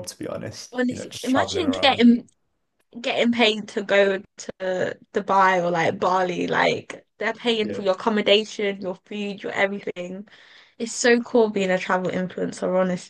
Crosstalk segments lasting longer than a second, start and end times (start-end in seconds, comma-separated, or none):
0.7-2.1